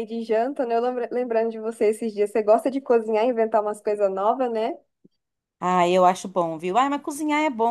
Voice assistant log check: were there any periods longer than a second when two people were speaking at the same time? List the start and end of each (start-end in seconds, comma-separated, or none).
none